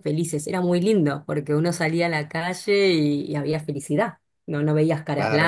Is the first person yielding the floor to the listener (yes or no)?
no